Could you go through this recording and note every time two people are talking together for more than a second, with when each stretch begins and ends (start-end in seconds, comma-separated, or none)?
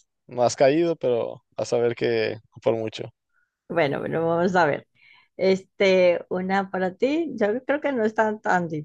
none